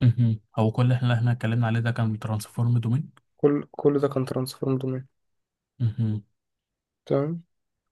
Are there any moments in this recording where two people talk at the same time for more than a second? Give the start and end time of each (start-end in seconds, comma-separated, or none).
none